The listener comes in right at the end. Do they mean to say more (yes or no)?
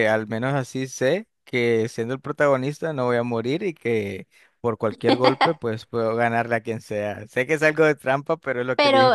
yes